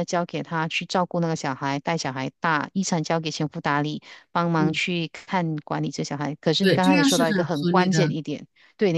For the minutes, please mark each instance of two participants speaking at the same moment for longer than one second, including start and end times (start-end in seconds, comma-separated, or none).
6.6-8.1